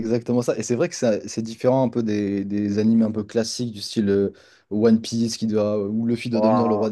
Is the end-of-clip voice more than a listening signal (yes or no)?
no